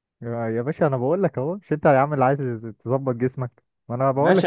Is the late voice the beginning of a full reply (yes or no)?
yes